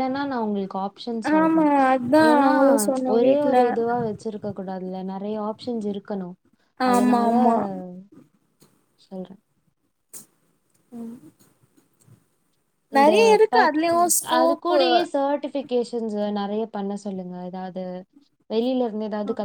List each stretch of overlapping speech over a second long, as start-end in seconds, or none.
none